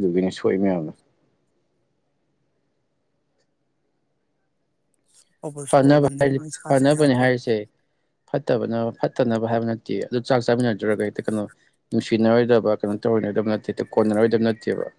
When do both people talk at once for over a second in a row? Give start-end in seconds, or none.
5.7-7.5